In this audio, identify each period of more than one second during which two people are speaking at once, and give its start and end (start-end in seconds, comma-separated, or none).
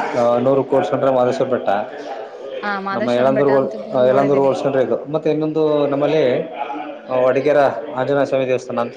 3.0-4.5